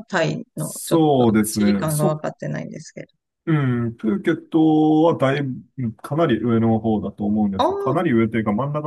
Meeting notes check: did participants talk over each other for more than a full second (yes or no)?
yes